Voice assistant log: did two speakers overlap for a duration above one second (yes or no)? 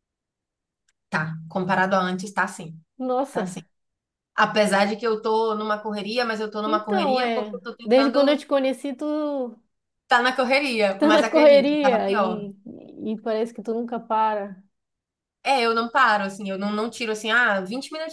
yes